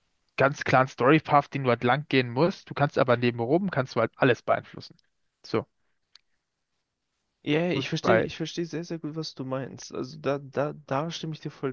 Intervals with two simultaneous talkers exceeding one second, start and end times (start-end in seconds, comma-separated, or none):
none